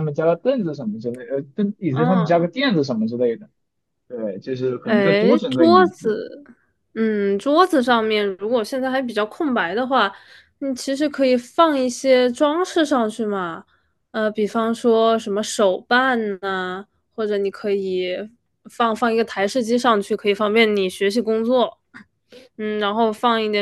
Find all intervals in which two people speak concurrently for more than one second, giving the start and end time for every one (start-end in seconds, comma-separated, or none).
4.8-6.2